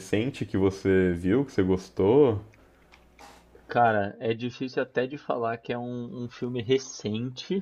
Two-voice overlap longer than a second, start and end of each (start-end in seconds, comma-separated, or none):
none